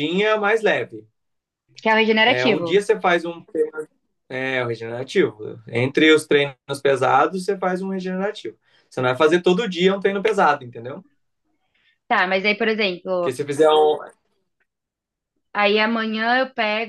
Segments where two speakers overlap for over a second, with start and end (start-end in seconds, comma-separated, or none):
none